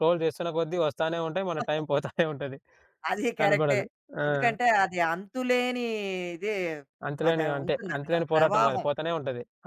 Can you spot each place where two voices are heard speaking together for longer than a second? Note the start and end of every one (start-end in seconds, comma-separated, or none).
7.3-9.1